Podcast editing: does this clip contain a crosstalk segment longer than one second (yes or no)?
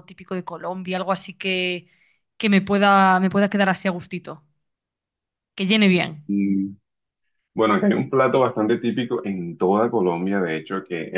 no